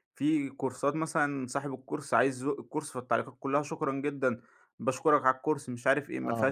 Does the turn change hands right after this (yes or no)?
no